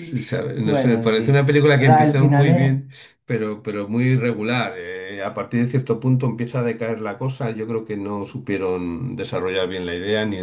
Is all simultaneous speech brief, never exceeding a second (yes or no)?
no